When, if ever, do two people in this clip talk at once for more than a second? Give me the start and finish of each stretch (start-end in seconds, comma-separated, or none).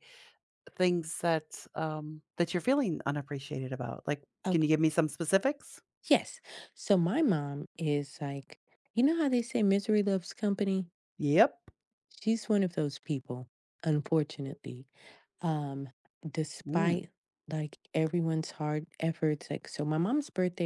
none